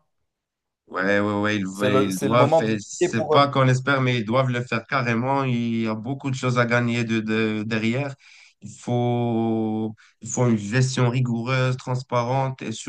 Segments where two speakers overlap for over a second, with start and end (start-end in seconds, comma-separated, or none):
1.7-3.4